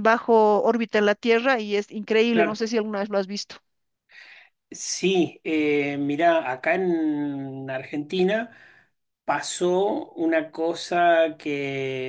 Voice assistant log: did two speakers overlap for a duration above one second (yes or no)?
no